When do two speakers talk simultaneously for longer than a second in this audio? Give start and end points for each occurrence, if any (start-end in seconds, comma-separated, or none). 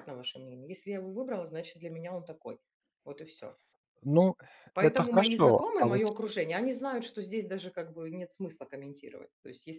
4.8-6.0